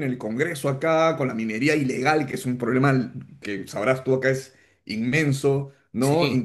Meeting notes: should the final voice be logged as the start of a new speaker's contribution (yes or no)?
no